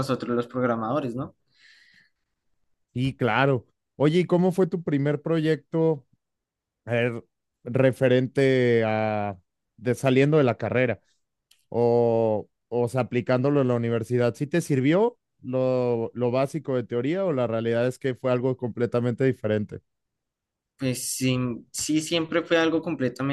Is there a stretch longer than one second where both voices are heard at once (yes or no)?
no